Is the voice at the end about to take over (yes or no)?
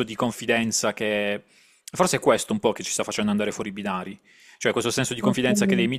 no